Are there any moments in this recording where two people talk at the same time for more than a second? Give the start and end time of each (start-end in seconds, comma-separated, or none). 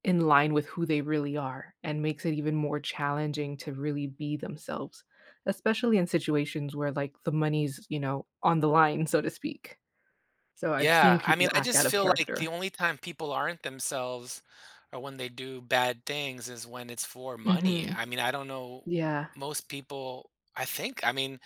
10.8-12.5